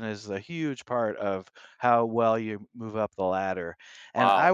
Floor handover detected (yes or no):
yes